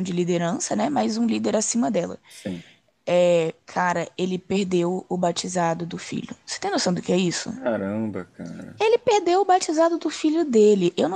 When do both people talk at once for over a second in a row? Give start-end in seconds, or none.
none